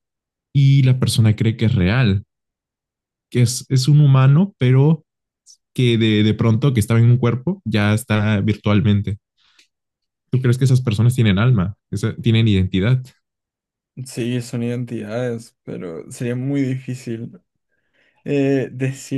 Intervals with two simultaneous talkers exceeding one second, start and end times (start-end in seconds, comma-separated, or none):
none